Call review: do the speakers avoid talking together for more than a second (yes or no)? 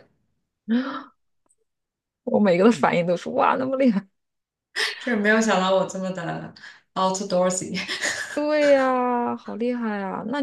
yes